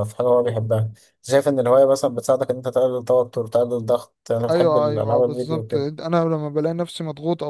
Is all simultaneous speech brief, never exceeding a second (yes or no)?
no